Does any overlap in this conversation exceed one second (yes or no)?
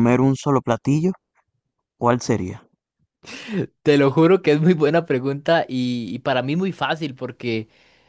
no